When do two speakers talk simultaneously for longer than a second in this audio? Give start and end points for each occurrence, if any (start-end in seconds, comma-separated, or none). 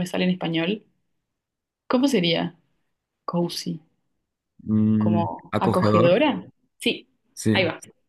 5.0-6.2